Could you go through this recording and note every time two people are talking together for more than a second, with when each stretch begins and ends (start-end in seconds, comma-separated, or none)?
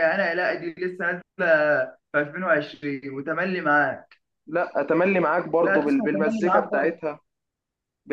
5.6-7.0